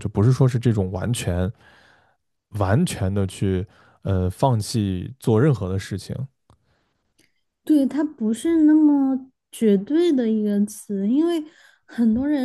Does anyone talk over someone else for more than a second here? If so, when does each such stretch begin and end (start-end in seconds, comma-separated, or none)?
none